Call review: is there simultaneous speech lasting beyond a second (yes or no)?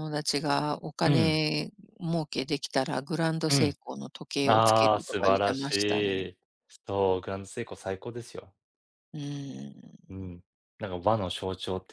yes